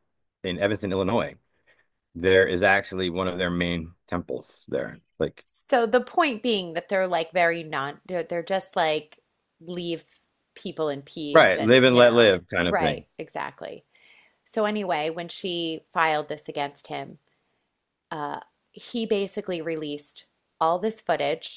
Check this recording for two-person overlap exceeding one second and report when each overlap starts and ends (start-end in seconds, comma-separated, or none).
11.3-13.0